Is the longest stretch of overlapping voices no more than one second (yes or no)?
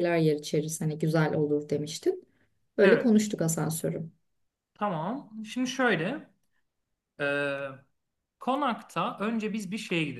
yes